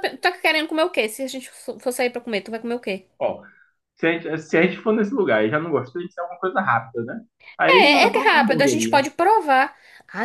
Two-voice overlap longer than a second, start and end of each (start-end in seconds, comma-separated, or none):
7.7-9.1